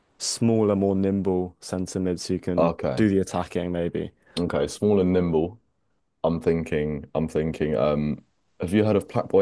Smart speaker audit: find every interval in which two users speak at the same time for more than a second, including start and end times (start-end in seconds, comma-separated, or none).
none